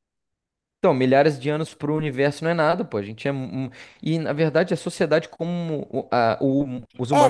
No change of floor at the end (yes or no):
no